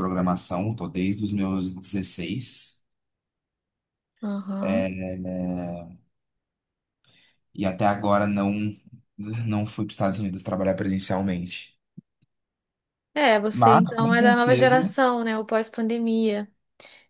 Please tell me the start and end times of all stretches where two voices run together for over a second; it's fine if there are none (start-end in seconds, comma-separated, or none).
13.5-14.9